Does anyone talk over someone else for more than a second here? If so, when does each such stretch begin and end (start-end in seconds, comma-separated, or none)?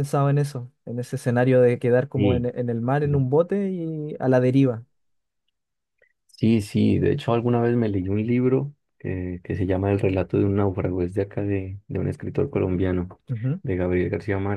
none